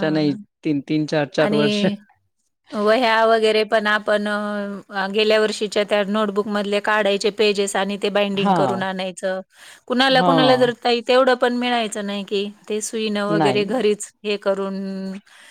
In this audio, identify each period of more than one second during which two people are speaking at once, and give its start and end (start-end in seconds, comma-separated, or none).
none